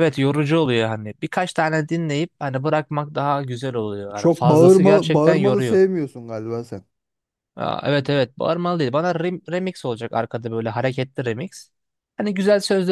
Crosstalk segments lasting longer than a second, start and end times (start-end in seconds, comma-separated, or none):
4.1-5.8